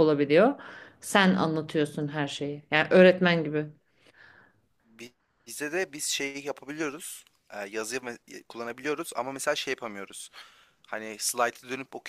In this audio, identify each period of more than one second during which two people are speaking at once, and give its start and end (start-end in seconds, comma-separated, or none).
none